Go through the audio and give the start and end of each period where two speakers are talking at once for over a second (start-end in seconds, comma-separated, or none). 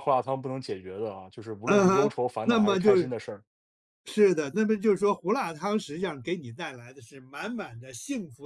1.7-3.1